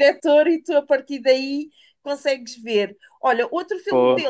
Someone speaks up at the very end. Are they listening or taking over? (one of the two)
listening